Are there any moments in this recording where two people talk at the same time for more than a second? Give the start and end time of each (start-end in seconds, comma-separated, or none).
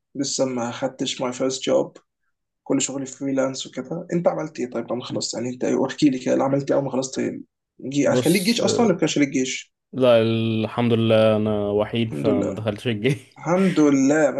none